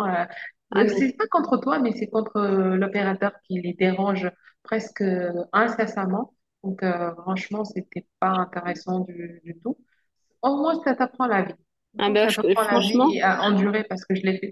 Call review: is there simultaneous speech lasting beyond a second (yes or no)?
yes